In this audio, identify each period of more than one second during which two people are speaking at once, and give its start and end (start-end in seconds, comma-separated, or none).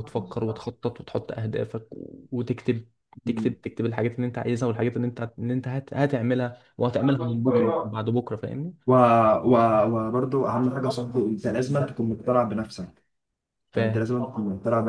none